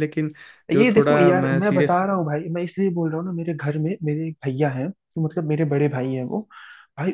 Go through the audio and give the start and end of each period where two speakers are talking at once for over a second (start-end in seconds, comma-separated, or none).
0.7-2.0